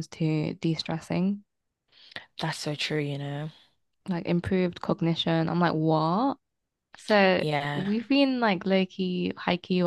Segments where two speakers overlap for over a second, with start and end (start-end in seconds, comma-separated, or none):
none